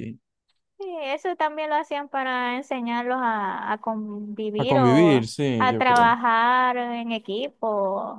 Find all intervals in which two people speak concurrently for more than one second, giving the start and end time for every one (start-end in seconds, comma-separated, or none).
4.6-6.2